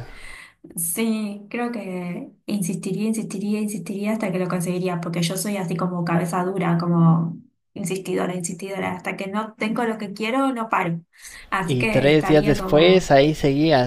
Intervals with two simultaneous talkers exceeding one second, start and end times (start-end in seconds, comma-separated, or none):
11.7-13.1